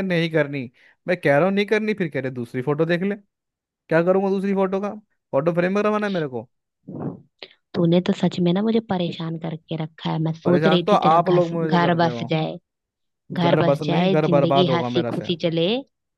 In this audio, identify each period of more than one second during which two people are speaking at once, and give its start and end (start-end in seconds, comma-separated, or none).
10.4-12.3, 13.4-15.3